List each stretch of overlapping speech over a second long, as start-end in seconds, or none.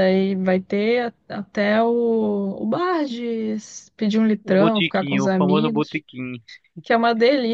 4.4-6.0